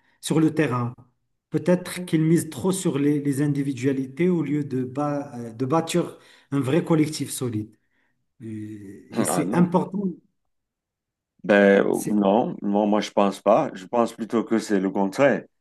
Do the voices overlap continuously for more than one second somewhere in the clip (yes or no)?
no